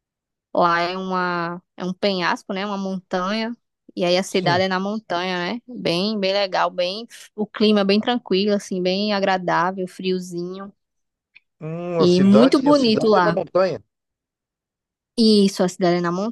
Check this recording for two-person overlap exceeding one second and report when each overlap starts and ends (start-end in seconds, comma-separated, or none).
12.0-13.4